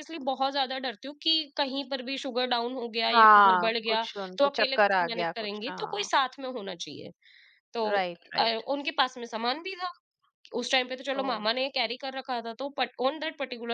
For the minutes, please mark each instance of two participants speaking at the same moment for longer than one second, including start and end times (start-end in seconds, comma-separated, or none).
3.1-6.1